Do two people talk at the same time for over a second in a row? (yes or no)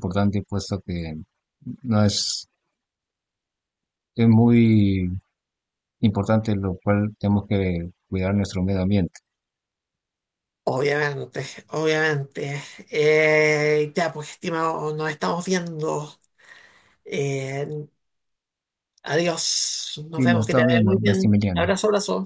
yes